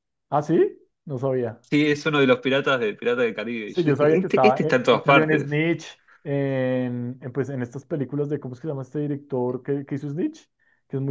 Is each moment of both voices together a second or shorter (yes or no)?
no